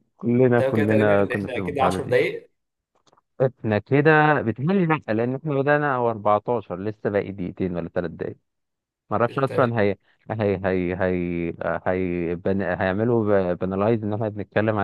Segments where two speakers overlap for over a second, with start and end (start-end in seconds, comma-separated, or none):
0.6-2.2